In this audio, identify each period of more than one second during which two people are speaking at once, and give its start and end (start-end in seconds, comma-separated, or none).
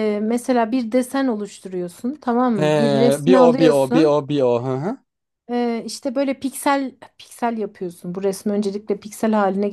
2.5-4.2